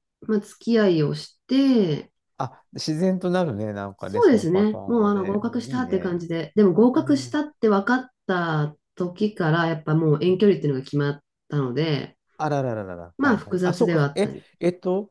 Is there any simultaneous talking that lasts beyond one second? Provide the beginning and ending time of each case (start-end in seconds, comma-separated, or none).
4.0-6.2, 13.2-14.4